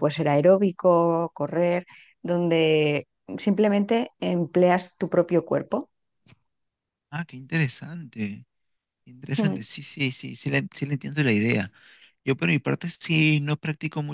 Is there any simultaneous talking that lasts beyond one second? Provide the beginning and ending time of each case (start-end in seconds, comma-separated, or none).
none